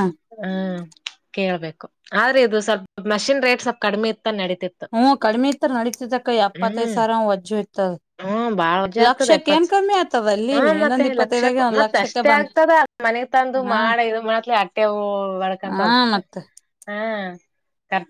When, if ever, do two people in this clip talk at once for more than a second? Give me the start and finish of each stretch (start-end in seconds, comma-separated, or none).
10.5-12.6